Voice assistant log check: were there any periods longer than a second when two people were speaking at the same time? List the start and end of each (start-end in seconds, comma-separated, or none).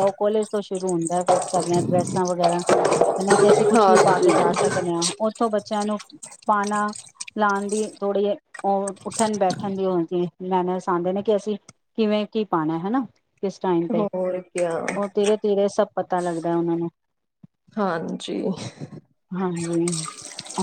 none